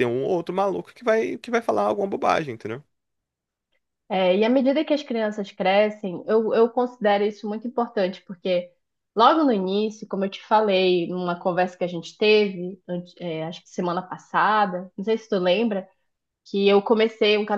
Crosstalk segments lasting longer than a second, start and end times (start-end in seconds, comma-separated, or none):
none